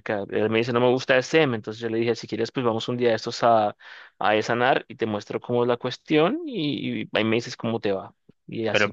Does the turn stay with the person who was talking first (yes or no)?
no